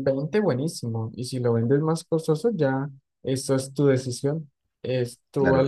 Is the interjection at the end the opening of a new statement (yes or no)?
yes